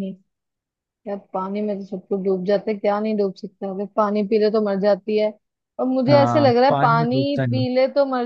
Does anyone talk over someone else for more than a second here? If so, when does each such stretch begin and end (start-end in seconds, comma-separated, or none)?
6.1-7.7